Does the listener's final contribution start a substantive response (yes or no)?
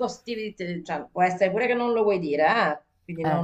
no